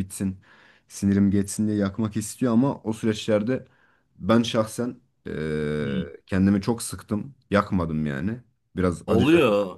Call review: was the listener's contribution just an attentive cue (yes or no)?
no